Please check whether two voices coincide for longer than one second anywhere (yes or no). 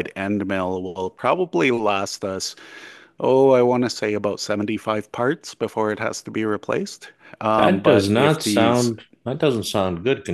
yes